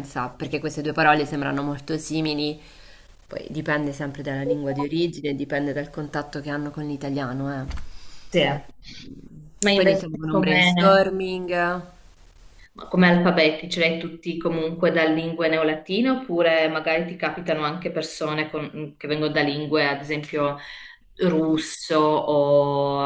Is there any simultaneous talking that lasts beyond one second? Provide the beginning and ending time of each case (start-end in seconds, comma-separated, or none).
9.7-11.1